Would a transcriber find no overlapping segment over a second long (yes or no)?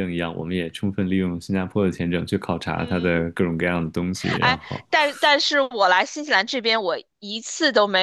yes